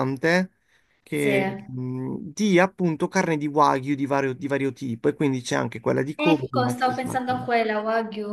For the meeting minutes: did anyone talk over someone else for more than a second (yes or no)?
yes